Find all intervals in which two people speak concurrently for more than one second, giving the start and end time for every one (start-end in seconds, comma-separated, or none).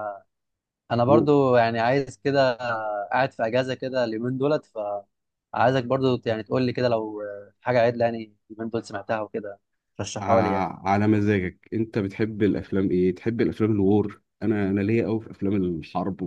none